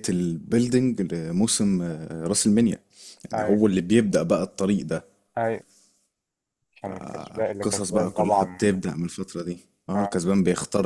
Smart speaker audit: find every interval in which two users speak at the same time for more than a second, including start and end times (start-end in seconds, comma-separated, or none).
6.8-8.8